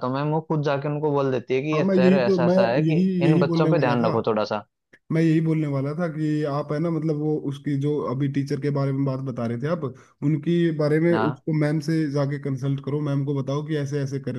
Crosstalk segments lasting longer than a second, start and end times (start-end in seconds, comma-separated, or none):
1.7-4.1